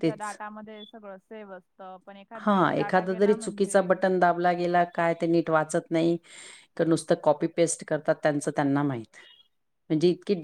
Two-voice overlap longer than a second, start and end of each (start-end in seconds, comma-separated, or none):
2.4-3.8